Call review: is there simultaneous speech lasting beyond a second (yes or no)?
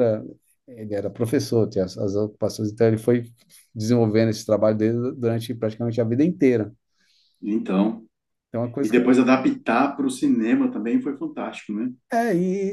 no